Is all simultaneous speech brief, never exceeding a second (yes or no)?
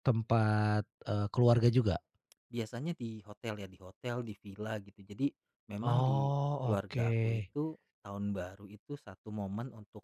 no